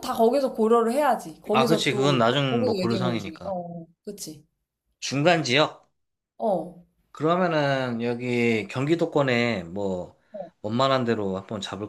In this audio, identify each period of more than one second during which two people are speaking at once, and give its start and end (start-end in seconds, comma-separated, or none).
1.5-3.5